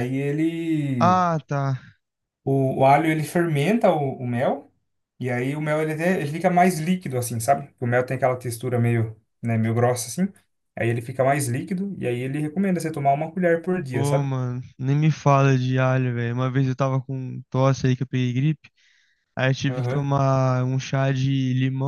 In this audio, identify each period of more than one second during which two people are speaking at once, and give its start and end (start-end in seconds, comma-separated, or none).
none